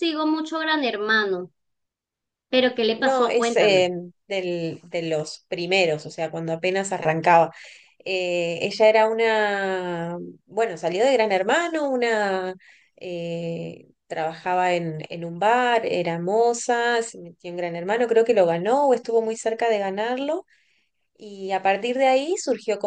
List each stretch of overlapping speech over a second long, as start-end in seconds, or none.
2.6-3.9